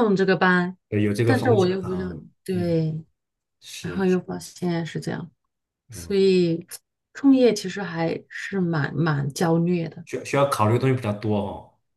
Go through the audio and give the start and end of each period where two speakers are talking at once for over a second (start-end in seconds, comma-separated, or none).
1.2-2.8